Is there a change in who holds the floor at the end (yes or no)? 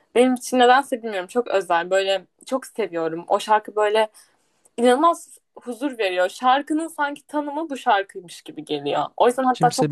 no